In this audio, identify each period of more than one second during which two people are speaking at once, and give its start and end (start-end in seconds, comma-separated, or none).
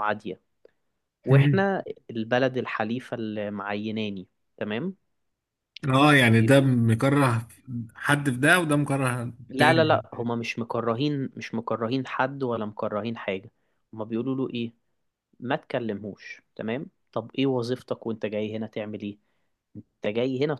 none